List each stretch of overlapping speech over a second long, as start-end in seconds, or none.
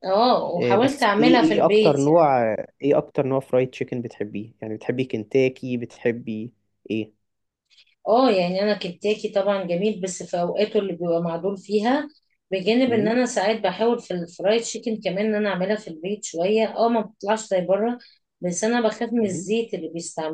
0.6-2.3